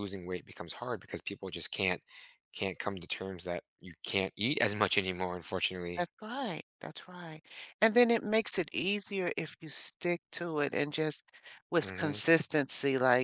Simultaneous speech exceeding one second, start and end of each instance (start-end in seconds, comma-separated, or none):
none